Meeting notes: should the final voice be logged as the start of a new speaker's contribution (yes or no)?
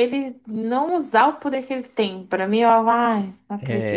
yes